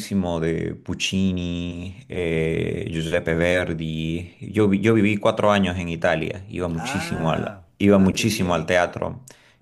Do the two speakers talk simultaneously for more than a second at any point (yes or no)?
yes